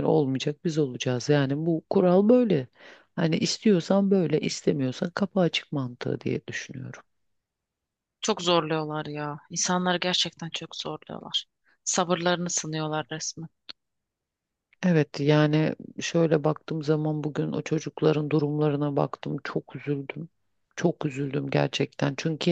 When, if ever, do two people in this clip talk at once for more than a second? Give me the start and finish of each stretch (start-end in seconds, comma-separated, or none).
none